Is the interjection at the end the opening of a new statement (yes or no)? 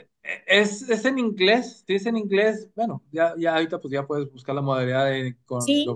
no